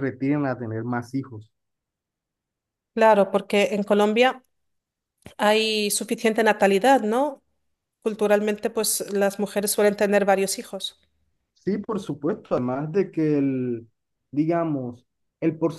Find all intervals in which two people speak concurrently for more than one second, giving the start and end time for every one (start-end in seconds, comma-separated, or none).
none